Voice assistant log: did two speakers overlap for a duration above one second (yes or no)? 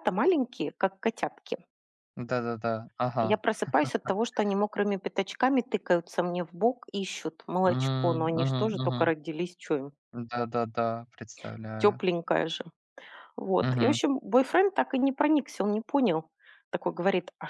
yes